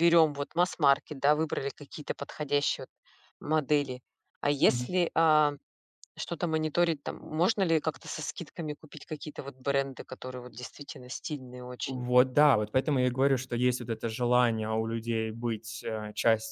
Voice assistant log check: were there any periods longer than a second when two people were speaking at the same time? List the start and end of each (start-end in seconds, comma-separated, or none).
none